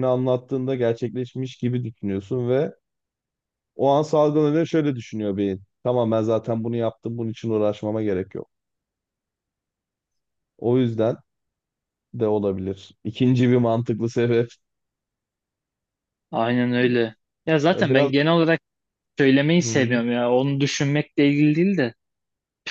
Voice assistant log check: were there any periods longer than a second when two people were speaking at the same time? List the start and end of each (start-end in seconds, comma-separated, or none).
none